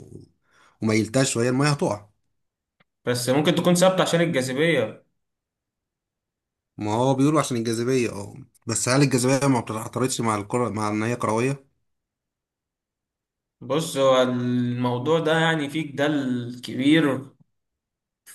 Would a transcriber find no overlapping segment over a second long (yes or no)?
yes